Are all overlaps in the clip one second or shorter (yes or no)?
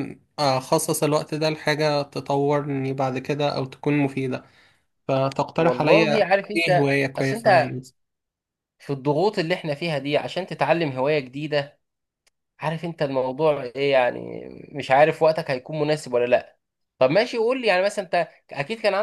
no